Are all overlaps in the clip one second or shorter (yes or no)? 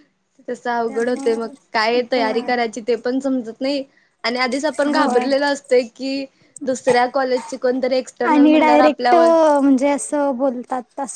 no